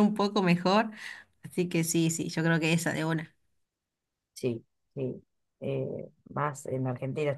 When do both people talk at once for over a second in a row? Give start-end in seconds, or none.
none